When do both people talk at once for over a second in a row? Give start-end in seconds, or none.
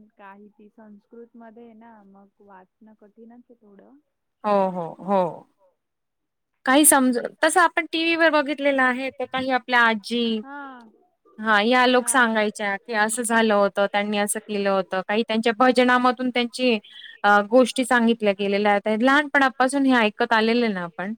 none